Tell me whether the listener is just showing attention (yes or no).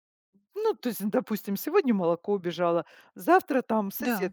yes